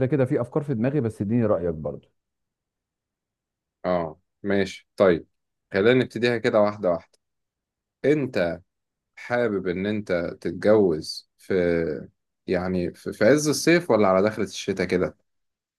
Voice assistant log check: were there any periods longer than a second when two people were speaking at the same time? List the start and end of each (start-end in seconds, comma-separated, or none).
none